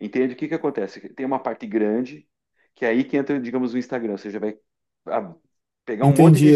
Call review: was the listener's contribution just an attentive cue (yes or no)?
no